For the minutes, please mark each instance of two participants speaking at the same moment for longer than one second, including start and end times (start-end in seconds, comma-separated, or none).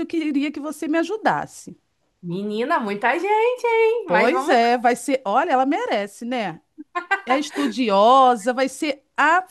none